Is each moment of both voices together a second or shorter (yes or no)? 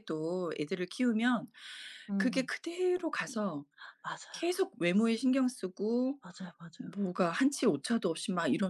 yes